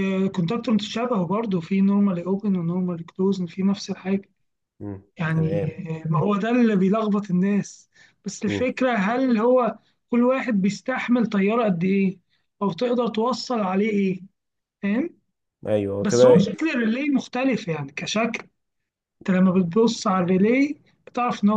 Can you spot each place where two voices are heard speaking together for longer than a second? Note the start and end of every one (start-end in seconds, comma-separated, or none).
none